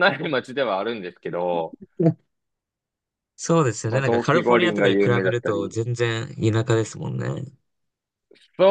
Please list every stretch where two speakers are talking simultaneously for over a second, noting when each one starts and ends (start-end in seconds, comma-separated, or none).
3.9-5.8